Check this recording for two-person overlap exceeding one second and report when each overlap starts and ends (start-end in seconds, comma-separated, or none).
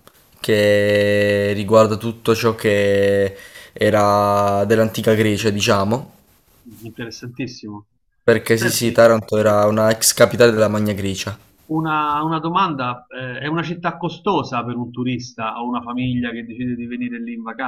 none